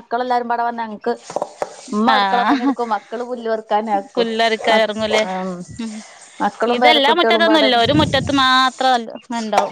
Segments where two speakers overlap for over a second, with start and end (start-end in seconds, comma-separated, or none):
none